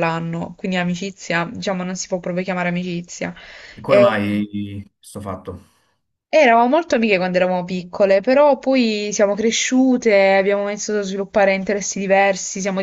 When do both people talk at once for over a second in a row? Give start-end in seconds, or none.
none